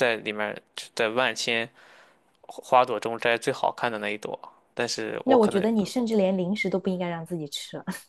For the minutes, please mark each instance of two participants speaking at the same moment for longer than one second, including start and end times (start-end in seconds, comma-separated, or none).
none